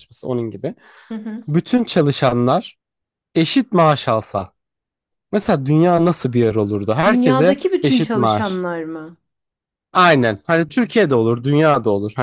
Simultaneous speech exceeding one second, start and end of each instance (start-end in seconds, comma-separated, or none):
7.0-8.7